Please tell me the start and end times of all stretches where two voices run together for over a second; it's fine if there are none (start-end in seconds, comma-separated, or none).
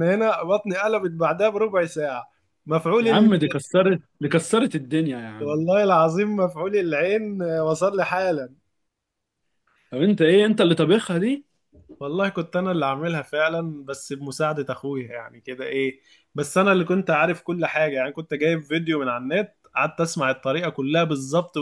none